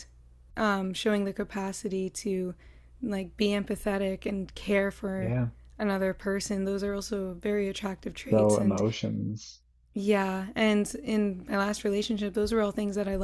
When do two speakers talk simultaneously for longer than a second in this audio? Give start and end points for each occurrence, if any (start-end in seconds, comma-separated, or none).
none